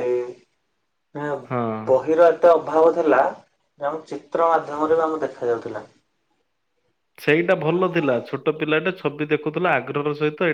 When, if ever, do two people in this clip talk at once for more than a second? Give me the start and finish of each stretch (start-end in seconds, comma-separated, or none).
none